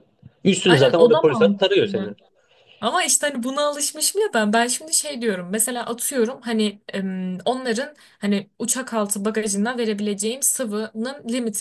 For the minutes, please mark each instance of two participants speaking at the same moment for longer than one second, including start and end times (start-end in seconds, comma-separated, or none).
0.7-2.1